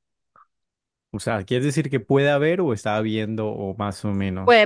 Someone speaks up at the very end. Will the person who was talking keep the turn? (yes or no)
no